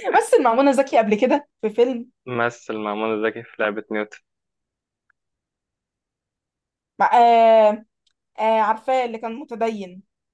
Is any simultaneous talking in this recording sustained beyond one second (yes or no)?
no